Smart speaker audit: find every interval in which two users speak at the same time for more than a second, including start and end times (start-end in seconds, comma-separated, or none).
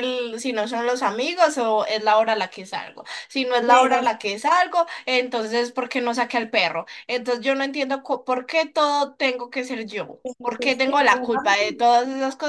10.2-11.6